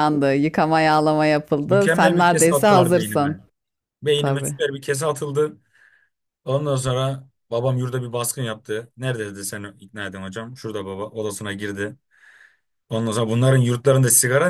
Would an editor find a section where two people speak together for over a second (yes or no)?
yes